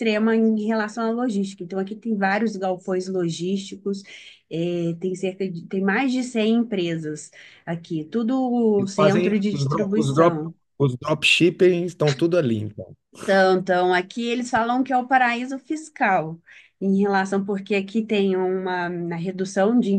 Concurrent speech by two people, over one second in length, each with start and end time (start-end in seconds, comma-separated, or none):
8.8-10.5